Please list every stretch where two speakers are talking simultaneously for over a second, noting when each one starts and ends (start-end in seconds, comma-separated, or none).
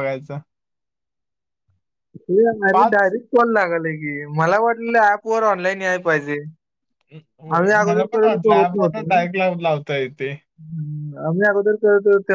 7.6-9.1